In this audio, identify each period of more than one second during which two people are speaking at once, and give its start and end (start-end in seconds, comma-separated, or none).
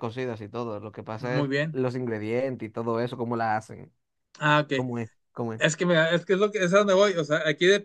none